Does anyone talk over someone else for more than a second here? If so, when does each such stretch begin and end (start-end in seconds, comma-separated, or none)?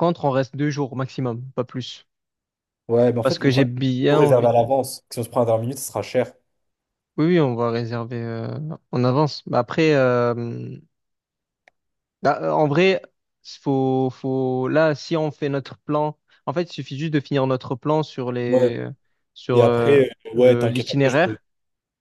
3.2-4.5, 19.5-21.4